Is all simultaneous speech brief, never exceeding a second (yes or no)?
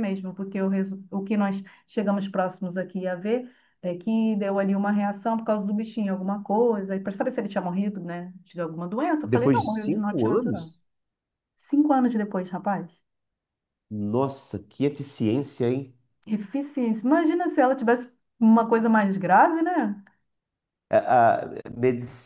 no